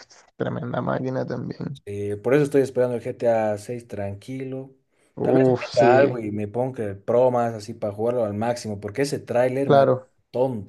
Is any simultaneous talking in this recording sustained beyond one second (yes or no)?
no